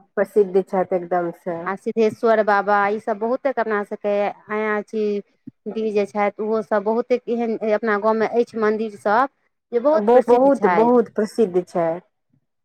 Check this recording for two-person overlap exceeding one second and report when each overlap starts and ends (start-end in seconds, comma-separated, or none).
none